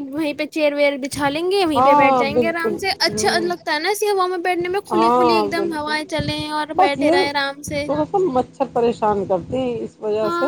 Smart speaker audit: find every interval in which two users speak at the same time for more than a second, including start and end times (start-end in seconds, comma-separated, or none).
1.8-3.5